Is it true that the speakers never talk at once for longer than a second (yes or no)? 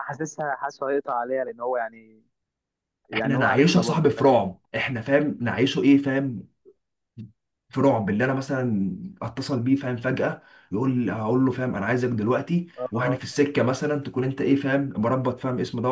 no